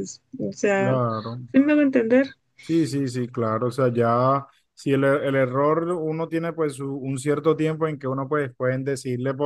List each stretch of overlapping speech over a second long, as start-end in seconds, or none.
none